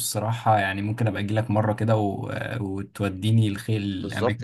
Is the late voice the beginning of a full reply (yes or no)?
yes